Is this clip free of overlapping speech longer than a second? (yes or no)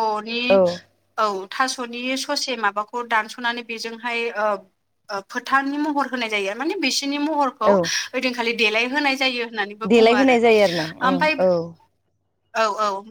yes